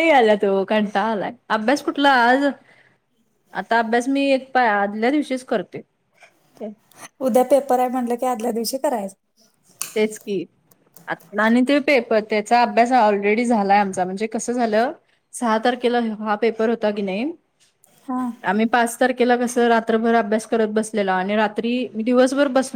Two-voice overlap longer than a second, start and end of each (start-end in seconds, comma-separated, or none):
none